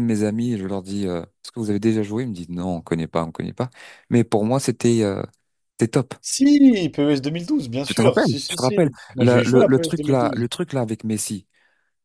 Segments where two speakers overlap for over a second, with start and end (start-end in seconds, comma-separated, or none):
7.8-10.5